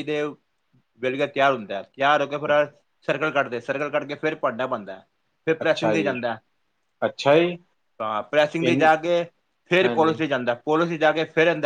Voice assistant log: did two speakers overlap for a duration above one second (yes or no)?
no